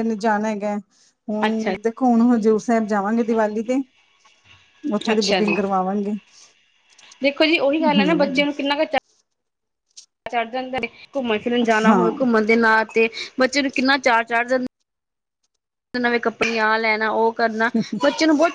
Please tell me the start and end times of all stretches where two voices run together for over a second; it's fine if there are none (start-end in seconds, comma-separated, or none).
none